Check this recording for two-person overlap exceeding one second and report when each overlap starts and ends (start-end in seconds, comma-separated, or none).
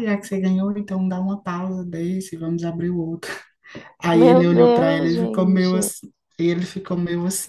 4.1-5.9